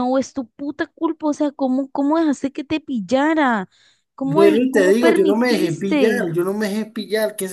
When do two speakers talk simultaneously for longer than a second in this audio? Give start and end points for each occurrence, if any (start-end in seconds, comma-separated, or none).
4.2-6.3